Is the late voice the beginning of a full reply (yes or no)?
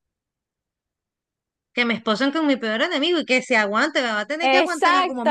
yes